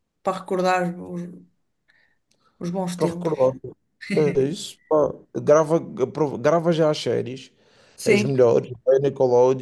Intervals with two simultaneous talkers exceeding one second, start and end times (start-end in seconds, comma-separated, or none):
none